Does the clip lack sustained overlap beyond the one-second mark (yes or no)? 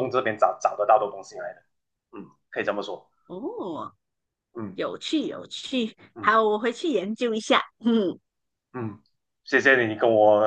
yes